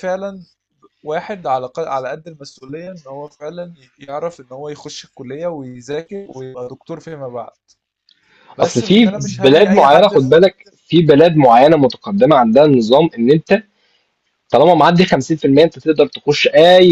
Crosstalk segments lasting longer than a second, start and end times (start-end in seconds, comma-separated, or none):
8.6-10.3